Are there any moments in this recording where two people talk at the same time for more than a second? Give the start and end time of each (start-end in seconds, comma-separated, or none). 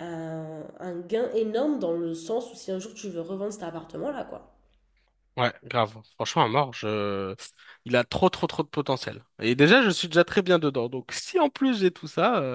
none